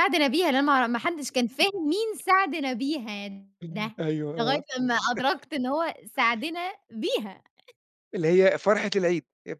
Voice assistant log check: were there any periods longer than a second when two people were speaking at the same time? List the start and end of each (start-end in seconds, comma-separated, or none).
none